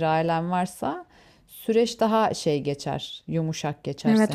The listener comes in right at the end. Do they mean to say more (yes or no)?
yes